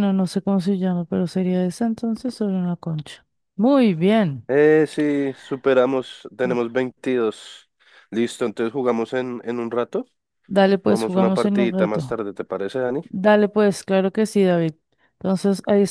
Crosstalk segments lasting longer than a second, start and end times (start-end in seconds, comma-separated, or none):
10.8-12.2